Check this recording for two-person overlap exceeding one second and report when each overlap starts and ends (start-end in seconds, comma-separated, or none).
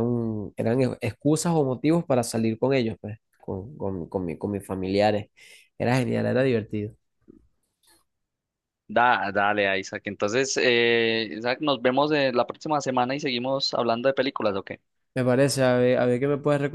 none